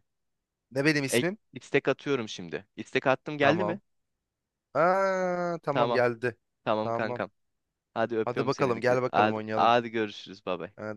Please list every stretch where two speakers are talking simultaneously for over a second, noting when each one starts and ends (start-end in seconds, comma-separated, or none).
8.2-9.8